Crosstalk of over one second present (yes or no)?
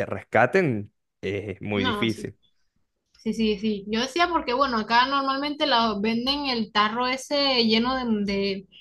no